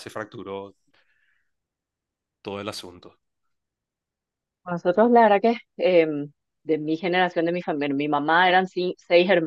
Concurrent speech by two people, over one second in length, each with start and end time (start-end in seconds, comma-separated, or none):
none